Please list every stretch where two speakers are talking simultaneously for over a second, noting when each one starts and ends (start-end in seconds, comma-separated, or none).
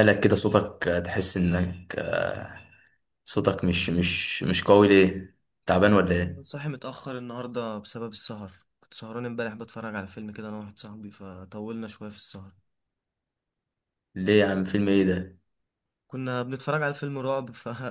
none